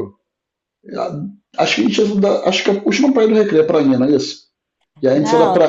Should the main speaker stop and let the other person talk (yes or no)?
yes